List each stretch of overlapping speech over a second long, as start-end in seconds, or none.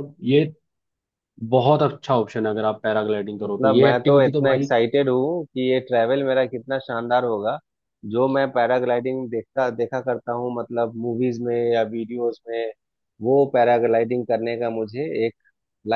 3.4-4.7